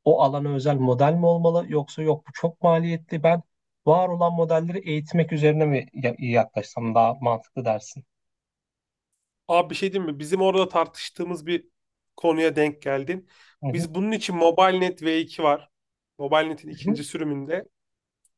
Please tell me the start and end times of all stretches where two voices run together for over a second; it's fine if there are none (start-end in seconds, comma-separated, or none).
none